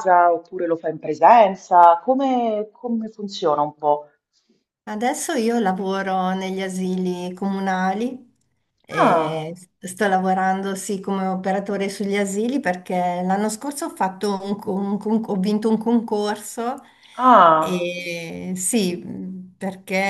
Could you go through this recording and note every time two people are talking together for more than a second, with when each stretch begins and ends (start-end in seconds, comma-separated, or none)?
none